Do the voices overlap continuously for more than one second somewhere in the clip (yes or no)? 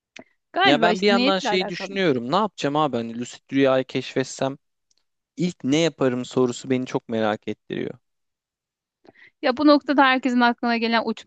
yes